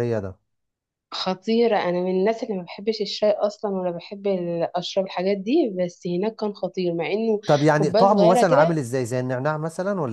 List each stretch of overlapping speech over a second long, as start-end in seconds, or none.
7.5-8.8